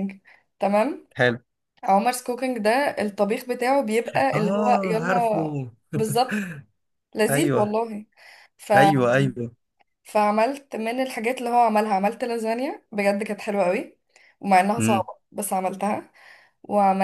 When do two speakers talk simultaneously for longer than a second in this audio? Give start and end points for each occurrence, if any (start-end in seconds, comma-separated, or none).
4.3-5.6